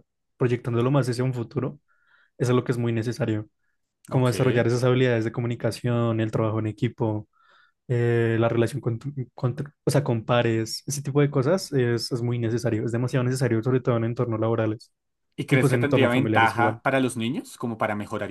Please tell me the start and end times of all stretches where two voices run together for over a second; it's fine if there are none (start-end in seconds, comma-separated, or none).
15.5-16.8